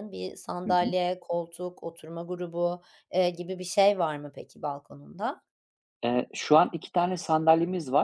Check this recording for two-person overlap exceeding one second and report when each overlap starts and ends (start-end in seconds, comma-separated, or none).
none